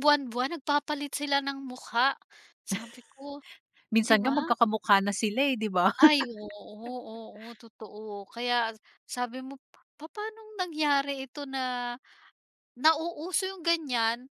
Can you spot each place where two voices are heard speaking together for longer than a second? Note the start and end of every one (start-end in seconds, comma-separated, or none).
none